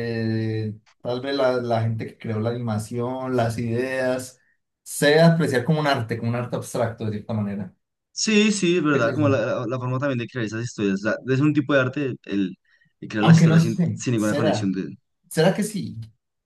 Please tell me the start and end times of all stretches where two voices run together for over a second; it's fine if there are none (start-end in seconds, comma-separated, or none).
13.2-14.7